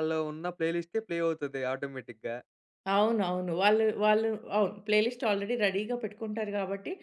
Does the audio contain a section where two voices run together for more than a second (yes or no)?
no